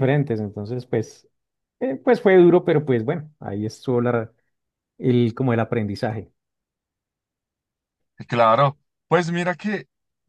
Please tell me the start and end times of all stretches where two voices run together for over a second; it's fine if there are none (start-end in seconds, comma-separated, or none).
none